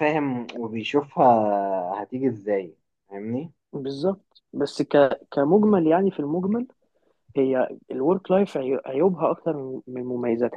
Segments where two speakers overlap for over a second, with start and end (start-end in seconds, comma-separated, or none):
none